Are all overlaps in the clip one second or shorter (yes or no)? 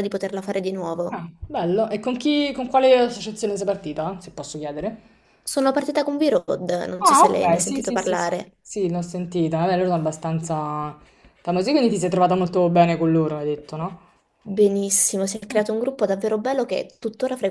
no